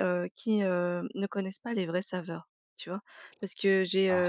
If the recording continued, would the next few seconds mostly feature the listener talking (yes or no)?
no